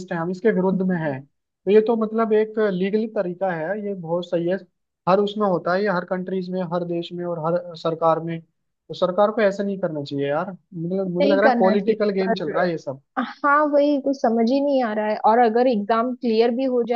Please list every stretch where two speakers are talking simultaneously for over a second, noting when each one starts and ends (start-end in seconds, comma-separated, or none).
11.2-12.5